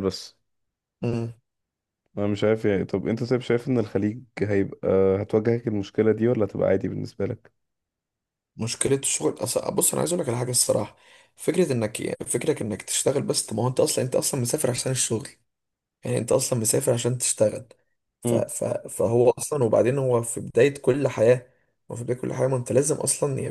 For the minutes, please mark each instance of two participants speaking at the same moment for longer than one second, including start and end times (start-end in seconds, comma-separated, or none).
none